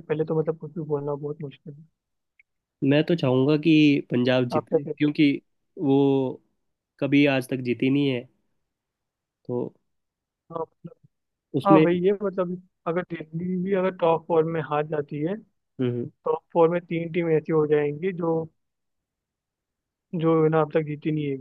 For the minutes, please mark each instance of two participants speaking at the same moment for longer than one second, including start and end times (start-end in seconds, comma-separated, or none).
none